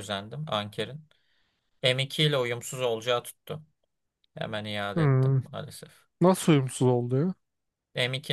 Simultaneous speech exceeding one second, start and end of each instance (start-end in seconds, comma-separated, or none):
none